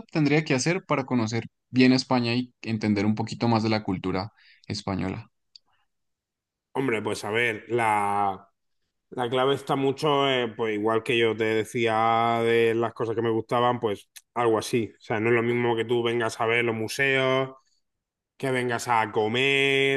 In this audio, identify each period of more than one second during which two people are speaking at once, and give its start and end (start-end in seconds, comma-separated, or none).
none